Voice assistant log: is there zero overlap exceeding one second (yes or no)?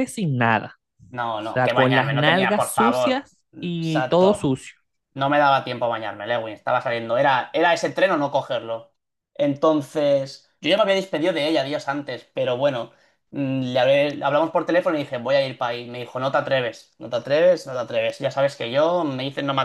no